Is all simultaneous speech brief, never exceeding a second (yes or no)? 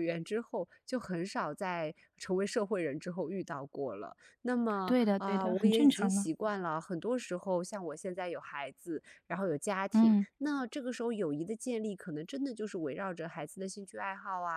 no